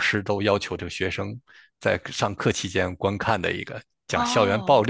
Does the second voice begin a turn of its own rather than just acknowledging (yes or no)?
no